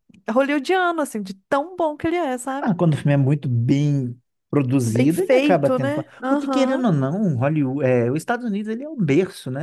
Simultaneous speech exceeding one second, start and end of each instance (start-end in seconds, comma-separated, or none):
4.9-6.8